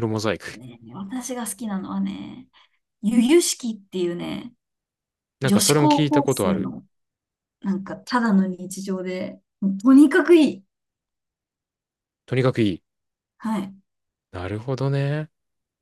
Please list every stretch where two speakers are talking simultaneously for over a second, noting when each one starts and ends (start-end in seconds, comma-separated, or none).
5.4-6.7